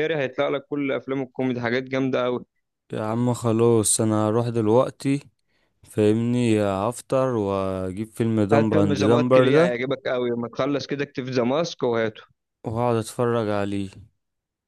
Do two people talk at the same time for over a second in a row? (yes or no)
yes